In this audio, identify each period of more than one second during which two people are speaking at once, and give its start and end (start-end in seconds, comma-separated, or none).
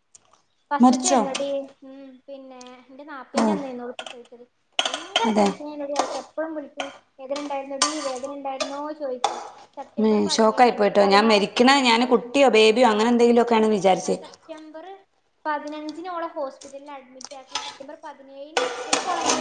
11.1-12.4